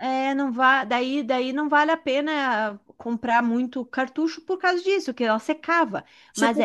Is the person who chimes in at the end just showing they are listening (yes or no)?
no